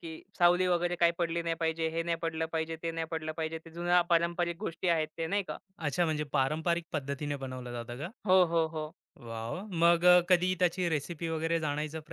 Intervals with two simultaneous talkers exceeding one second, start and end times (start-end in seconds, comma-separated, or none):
none